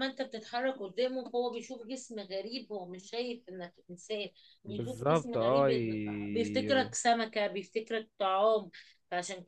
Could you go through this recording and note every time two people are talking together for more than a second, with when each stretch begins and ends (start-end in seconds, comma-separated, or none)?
4.7-6.9